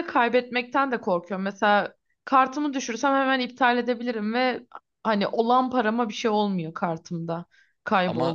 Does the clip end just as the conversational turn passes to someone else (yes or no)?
no